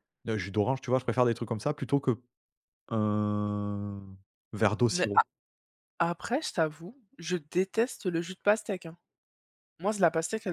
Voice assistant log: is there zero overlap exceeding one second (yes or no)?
yes